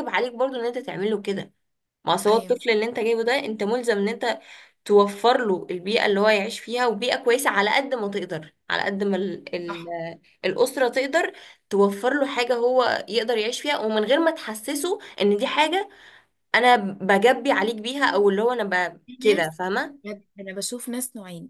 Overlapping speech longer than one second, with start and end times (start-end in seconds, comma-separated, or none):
none